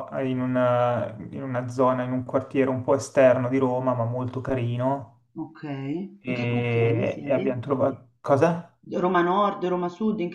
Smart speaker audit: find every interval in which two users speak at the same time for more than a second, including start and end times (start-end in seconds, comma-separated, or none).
6.2-7.5